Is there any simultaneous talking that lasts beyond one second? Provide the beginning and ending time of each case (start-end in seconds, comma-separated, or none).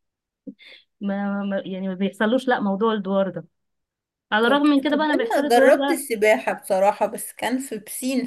4.5-6.1